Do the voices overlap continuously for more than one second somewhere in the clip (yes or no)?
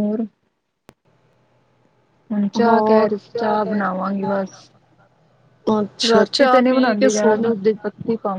yes